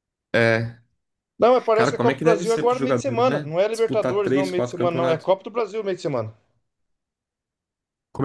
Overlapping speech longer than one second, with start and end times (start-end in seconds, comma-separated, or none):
1.7-5.3